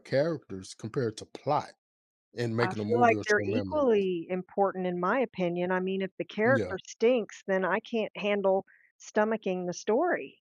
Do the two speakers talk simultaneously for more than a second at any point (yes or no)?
yes